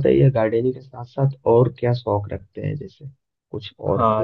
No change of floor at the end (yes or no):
no